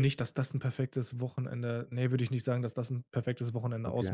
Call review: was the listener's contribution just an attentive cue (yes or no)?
no